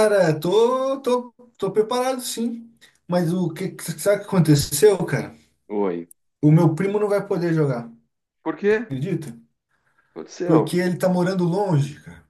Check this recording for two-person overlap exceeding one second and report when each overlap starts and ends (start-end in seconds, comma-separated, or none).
none